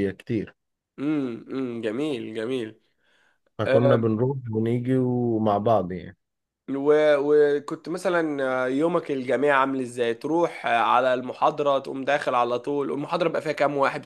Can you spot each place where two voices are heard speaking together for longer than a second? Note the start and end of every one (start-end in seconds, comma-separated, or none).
none